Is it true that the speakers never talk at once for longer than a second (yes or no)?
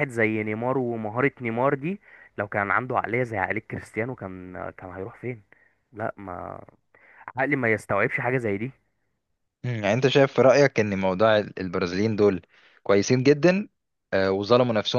yes